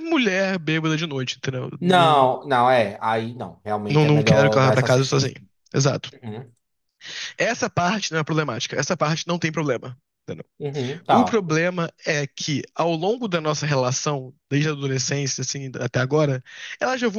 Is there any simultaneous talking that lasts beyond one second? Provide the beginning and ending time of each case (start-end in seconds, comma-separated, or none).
3.9-5.3